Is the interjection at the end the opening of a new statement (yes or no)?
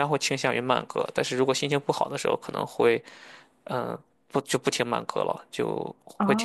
yes